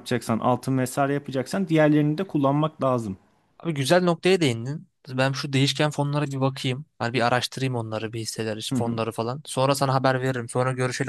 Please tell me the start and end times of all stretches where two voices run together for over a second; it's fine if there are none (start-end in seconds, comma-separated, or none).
none